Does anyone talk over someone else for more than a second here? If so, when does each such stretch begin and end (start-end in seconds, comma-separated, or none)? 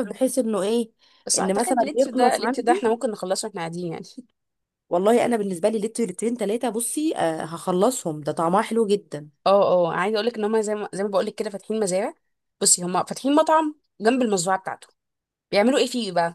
1.4-3.0